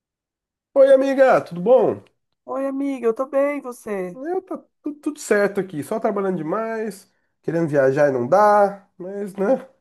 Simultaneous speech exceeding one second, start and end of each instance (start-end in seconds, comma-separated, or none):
none